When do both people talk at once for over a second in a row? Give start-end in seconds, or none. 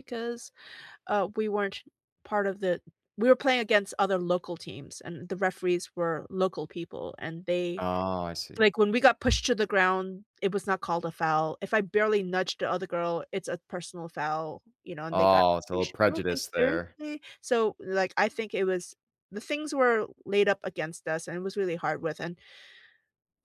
15.1-17.0